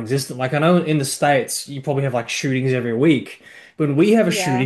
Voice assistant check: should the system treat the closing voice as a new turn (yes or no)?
no